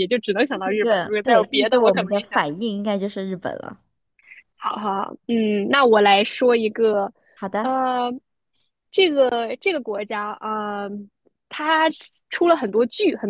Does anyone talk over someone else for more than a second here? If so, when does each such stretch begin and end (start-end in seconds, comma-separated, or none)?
0.5-2.4